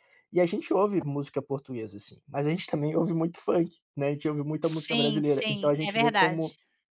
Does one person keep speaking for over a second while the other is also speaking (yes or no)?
yes